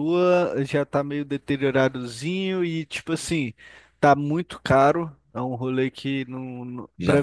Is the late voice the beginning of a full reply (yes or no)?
no